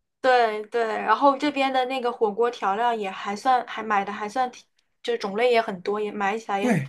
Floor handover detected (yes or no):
yes